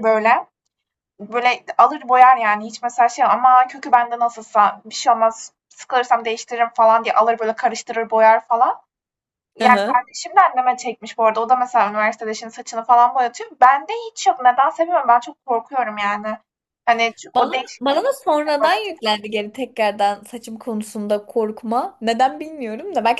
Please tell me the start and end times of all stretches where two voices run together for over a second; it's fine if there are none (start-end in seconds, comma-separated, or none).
17.4-19.1